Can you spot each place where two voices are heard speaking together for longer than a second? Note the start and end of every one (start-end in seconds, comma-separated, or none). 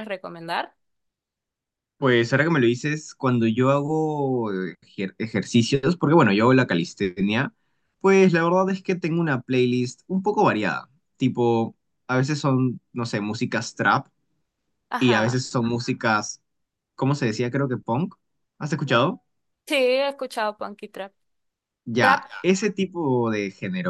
none